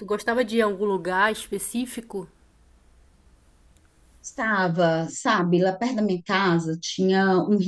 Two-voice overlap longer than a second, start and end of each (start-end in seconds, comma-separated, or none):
none